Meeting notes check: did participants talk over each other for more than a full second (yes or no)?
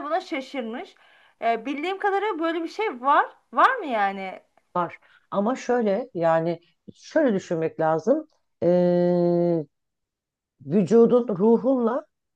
no